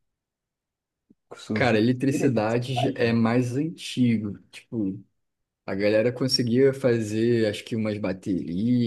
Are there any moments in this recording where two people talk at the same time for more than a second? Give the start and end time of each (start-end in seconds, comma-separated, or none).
1.5-3.1